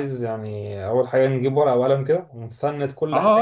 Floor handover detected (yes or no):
yes